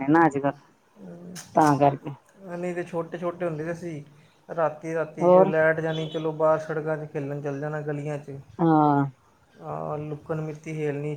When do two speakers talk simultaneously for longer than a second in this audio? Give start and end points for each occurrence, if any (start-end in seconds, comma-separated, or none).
none